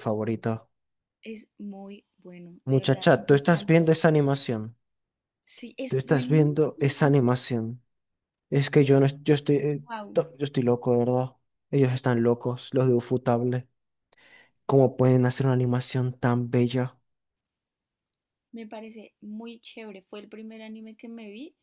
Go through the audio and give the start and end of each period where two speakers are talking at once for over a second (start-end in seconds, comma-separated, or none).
2.7-3.9, 5.9-7.2